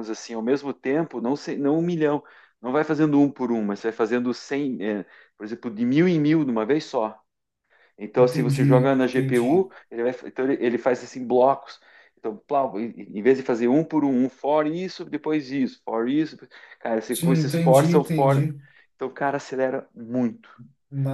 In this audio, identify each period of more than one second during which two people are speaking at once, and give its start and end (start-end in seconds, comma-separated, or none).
8.2-9.7, 17.1-18.5